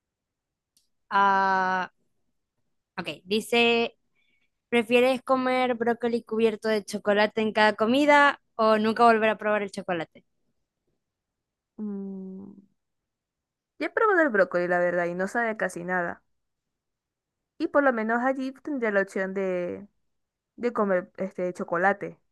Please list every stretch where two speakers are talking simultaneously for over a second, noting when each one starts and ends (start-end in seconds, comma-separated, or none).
none